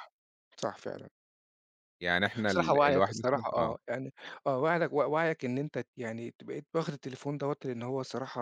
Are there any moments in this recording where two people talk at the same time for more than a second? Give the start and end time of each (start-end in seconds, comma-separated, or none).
2.5-3.7